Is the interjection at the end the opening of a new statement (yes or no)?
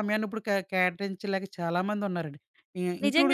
yes